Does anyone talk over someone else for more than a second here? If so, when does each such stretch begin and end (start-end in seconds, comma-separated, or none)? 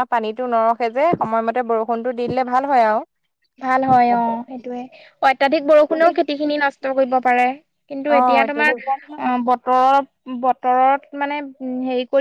none